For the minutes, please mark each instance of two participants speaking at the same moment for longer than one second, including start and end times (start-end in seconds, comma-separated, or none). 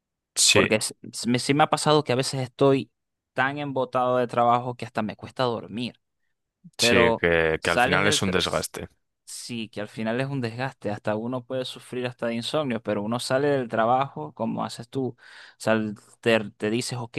6.8-8.7